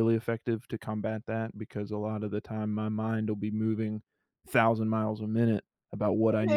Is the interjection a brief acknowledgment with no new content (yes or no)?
yes